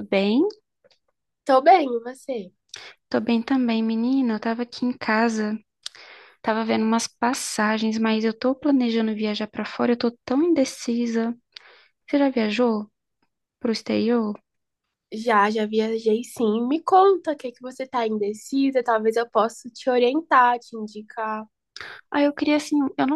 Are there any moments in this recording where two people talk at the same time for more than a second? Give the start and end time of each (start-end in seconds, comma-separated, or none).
none